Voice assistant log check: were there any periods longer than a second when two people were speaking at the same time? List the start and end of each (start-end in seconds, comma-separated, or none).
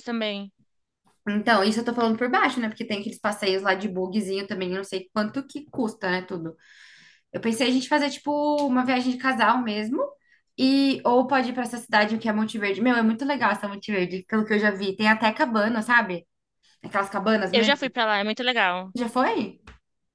none